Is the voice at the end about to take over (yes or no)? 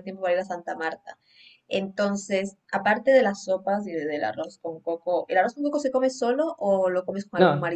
yes